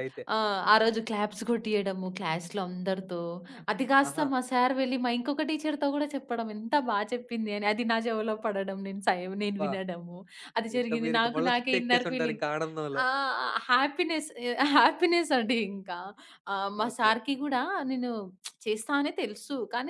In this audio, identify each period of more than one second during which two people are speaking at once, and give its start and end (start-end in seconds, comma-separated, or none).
10.8-12.4